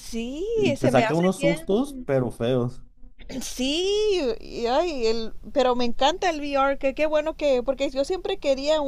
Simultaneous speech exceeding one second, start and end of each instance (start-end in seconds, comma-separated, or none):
0.6-2.1